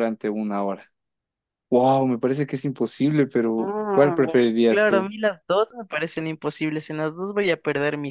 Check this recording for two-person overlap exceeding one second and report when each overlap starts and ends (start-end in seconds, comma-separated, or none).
3.6-5.1